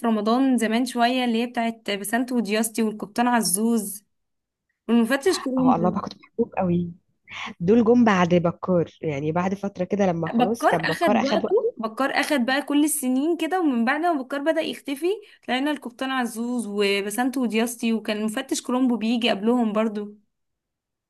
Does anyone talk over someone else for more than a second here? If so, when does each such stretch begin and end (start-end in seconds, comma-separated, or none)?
10.3-11.7